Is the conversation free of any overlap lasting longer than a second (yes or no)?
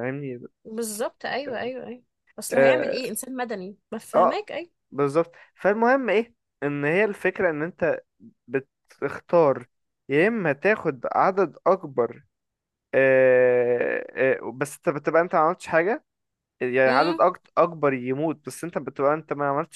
yes